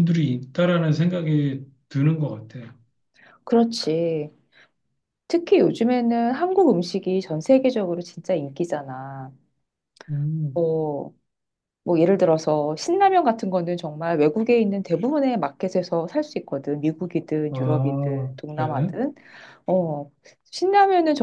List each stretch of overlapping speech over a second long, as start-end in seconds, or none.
17.5-18.9